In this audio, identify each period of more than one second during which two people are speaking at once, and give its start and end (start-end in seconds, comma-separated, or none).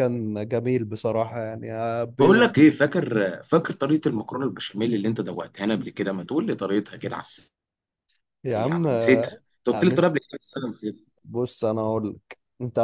8.4-10.1